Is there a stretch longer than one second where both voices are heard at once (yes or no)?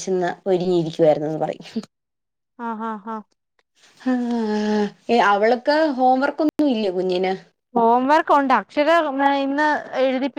no